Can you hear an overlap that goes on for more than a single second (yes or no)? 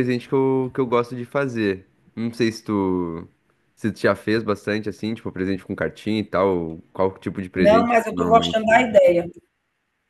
yes